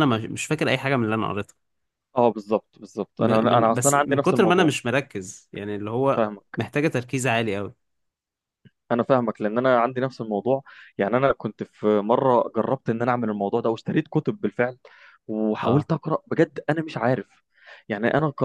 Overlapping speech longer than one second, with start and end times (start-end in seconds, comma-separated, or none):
3.2-4.7